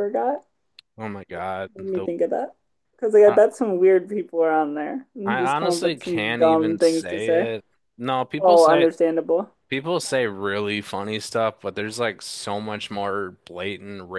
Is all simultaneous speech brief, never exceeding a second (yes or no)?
no